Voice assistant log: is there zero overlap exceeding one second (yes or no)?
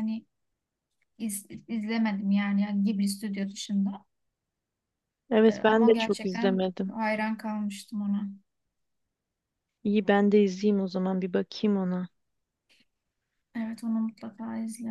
no